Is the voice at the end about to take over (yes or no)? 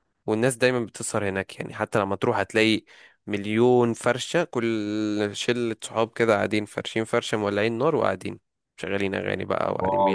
yes